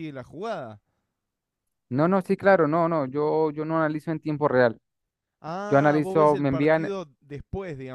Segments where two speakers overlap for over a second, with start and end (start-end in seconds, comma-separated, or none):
5.7-6.9